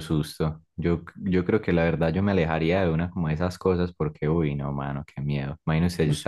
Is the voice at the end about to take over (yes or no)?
no